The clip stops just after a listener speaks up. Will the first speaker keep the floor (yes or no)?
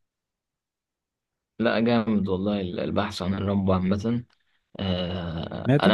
yes